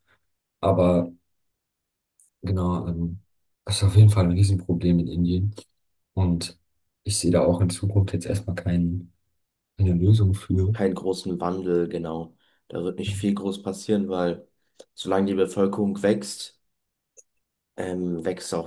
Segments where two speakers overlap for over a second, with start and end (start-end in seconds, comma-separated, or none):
none